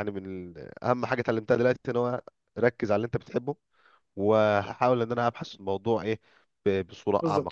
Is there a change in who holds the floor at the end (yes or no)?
yes